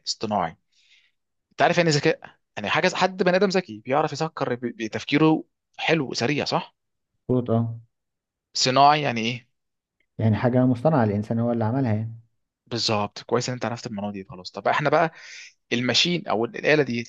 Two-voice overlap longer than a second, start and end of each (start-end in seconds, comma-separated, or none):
none